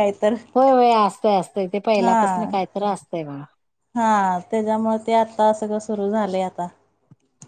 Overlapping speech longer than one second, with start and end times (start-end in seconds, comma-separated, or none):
none